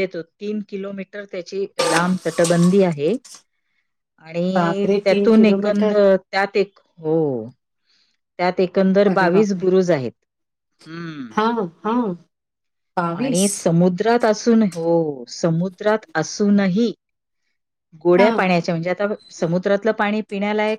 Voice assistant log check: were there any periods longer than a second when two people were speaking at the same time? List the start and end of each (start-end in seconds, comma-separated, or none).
4.6-6.0